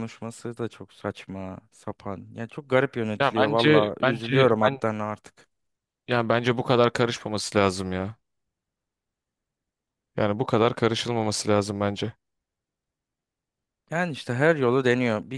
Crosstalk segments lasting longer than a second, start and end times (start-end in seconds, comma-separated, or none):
3.2-4.8